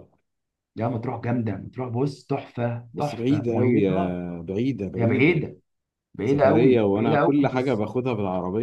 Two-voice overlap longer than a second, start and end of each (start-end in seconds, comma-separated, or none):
2.9-4.2, 6.2-7.8